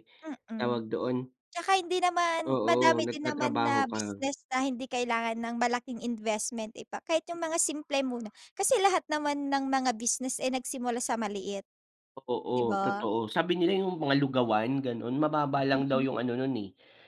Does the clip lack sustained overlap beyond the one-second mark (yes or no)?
no